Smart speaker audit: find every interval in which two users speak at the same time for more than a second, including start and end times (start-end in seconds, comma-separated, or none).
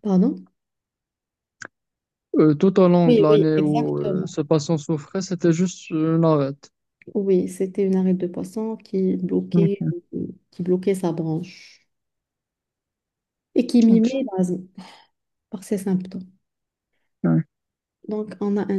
3.1-4.4